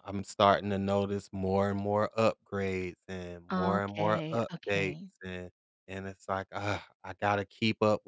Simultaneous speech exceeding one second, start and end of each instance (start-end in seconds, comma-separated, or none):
3.5-5.1